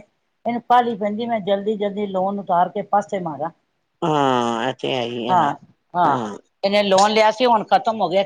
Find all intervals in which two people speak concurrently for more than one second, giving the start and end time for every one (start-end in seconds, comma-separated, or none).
none